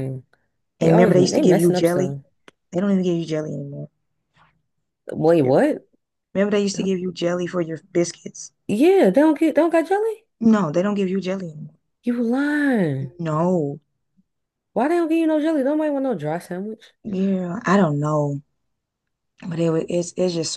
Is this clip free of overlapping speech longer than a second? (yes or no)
no